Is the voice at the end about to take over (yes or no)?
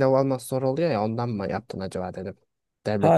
yes